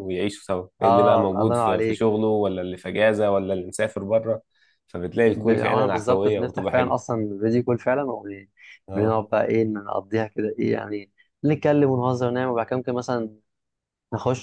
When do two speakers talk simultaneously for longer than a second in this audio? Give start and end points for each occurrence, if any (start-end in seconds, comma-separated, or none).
0.8-2.0, 5.2-7.0